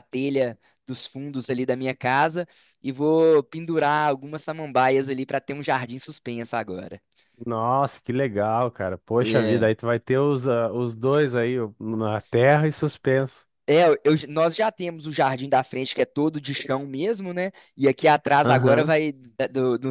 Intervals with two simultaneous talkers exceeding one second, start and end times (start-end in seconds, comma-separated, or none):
none